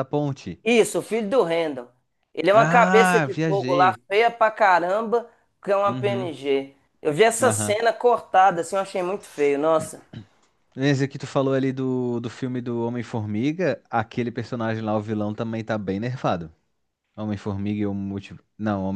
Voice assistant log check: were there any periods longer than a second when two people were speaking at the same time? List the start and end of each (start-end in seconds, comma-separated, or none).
2.5-4.0